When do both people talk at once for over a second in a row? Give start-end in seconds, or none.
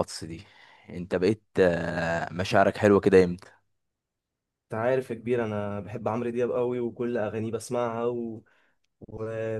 none